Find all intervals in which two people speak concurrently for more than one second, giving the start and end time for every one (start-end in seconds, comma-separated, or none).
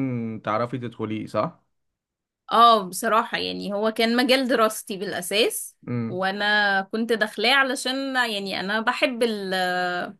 none